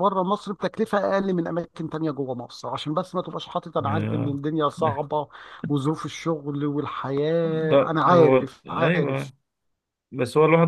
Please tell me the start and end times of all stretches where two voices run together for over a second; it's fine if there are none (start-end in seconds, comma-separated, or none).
7.7-9.3